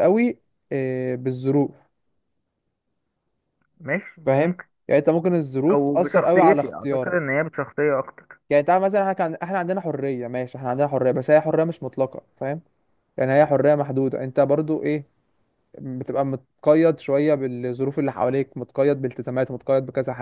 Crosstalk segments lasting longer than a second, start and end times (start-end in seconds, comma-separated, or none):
5.7-7.2